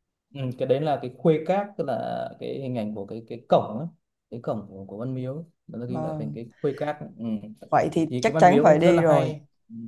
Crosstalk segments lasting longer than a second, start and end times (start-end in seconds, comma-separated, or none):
8.1-9.3